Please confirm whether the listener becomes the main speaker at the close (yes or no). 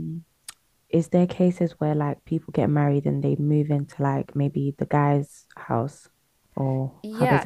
yes